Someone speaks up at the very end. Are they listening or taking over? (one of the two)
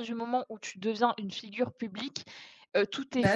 listening